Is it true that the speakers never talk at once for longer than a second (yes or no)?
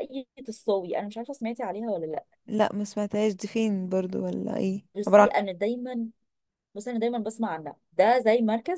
yes